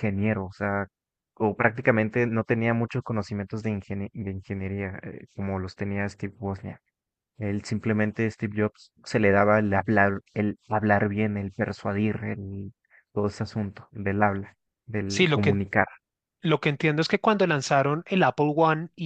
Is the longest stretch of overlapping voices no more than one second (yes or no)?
yes